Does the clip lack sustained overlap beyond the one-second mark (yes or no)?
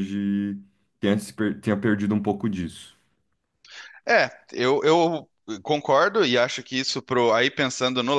yes